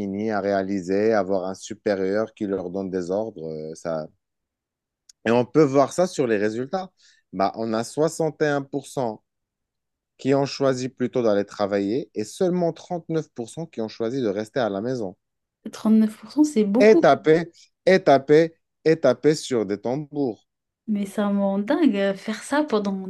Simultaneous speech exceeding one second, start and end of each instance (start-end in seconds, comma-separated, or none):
none